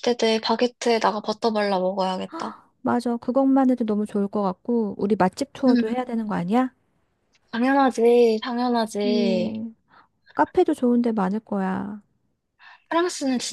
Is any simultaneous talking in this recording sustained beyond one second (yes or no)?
no